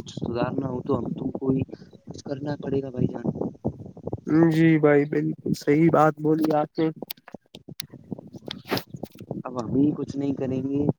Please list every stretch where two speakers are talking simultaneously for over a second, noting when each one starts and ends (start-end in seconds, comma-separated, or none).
none